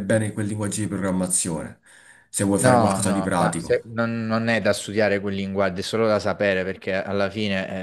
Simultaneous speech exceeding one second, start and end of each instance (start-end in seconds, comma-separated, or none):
2.6-3.8